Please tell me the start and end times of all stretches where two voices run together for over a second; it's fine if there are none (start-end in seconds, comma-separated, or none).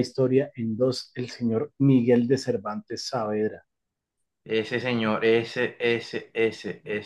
none